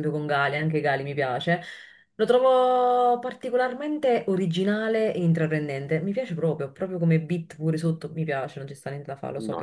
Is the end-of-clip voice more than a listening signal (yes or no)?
yes